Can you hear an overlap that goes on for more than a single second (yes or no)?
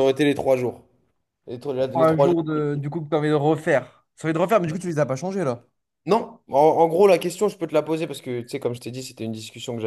no